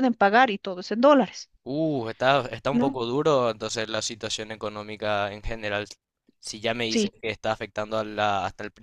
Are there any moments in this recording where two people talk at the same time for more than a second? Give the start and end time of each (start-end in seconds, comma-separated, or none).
none